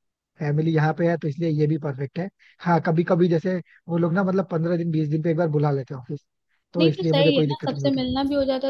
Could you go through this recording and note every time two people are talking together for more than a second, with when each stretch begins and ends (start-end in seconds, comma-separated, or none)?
6.8-8.0